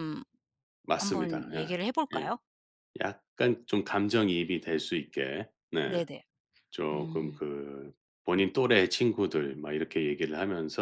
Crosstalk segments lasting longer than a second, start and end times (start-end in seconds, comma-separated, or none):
1.0-2.2